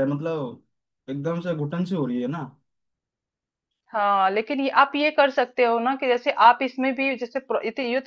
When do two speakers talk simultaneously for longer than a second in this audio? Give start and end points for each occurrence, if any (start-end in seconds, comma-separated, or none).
none